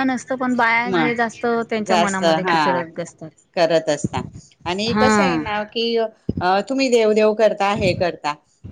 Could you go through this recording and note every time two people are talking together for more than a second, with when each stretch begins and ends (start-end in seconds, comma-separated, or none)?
0.9-2.8